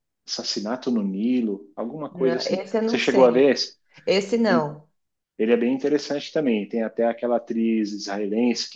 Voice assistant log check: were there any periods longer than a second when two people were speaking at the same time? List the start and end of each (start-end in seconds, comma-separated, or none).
2.1-3.6